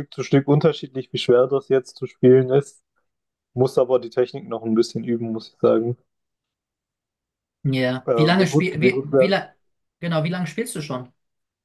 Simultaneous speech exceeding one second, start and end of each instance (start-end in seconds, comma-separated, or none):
8.0-9.4